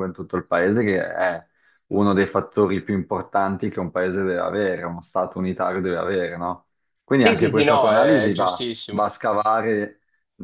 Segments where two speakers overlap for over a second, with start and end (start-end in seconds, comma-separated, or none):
7.2-9.1